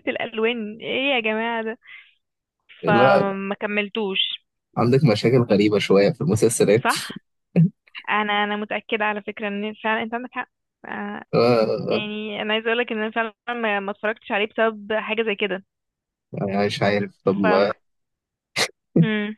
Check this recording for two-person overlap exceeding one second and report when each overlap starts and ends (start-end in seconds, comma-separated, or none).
none